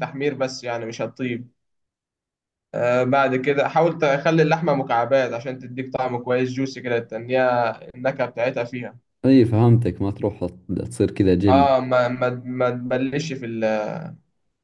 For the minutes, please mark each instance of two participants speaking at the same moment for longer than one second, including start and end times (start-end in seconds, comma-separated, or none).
none